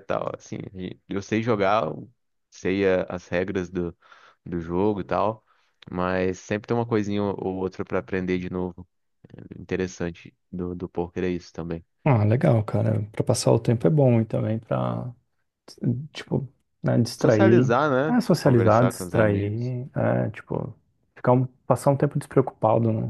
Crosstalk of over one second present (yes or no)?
yes